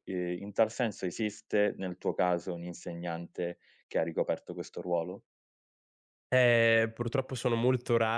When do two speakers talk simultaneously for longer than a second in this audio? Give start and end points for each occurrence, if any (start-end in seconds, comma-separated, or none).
none